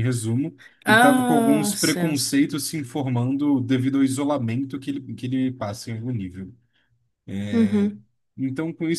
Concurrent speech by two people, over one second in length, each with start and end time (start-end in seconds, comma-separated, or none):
0.8-2.4